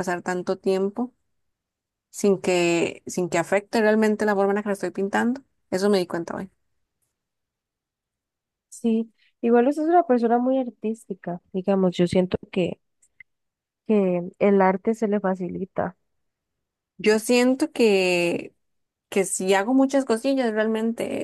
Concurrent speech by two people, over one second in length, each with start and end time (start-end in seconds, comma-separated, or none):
none